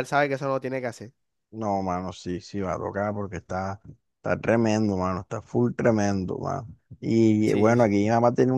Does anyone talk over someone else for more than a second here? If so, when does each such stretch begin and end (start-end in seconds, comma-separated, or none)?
none